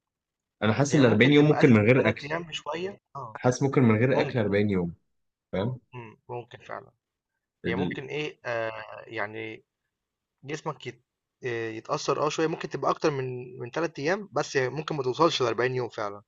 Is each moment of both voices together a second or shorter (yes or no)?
no